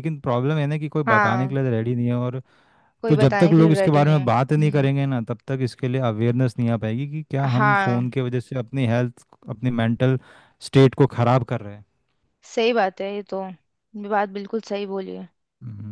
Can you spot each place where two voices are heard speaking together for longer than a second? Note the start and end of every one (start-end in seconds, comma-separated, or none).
3.1-4.9